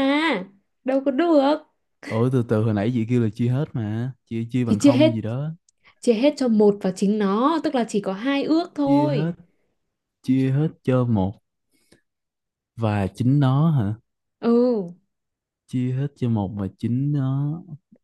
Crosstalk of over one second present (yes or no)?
no